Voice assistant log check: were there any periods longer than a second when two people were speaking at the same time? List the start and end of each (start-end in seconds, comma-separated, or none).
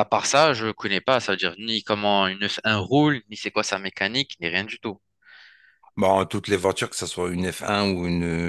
none